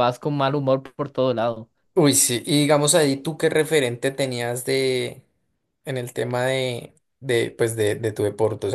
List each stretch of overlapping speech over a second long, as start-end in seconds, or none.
none